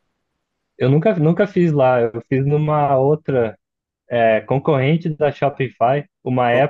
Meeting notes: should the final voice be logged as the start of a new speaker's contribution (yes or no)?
no